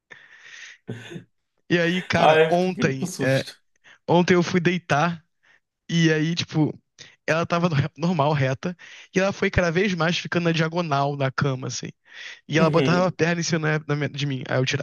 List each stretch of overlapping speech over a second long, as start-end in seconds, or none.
2.2-3.4